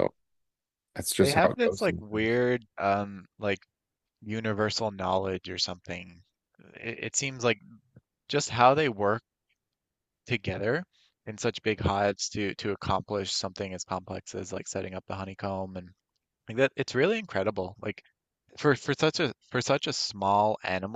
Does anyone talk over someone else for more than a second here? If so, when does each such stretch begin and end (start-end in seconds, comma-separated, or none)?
1.2-2.4